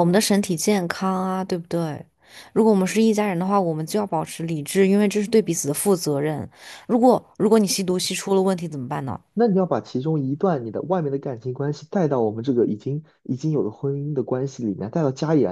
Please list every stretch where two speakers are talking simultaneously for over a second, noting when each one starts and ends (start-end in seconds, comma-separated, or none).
none